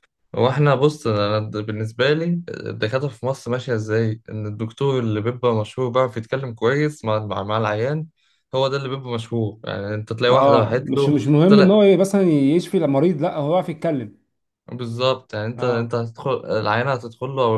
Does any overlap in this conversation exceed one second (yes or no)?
yes